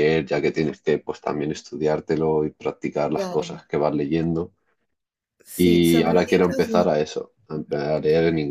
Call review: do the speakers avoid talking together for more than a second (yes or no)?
no